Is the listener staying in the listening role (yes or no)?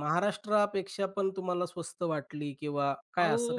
no